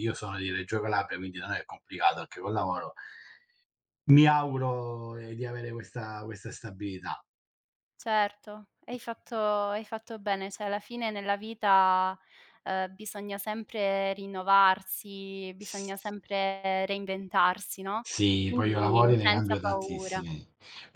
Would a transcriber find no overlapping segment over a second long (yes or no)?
no